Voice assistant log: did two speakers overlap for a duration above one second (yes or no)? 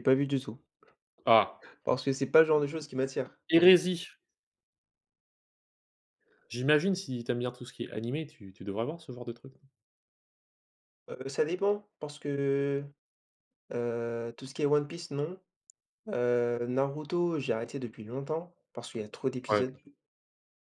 no